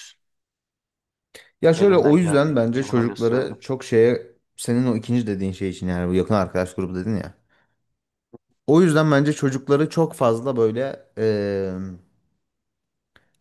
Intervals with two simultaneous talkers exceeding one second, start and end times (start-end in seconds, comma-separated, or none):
1.7-3.6